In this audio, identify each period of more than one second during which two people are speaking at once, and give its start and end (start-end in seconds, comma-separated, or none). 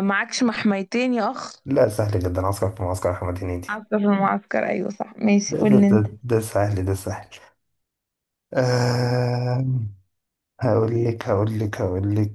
none